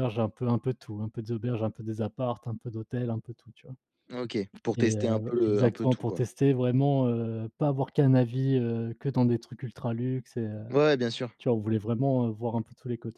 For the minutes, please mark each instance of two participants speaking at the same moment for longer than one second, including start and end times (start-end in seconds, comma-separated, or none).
4.8-6.2